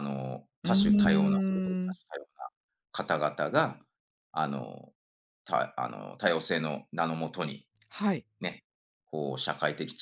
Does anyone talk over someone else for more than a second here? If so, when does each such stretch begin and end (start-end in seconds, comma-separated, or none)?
0.6-2.0